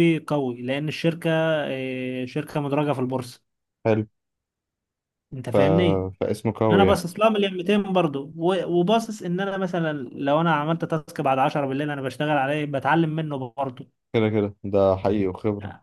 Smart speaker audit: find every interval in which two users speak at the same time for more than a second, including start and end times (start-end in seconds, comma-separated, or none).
none